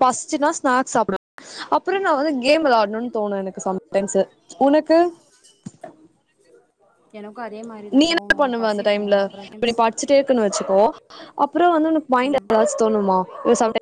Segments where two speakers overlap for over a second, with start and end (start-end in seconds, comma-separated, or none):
8.0-9.8